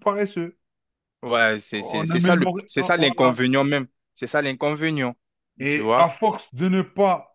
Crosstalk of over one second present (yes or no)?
yes